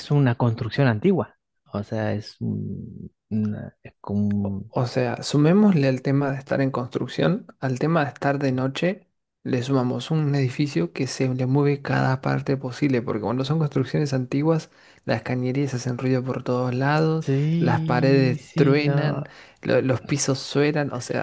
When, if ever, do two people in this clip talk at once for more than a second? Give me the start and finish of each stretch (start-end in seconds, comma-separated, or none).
17.2-19.2